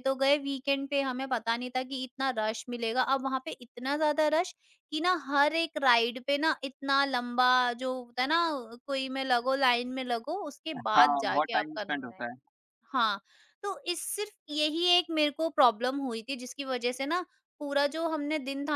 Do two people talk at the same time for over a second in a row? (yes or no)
yes